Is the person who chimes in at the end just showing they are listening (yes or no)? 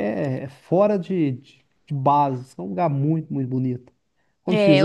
no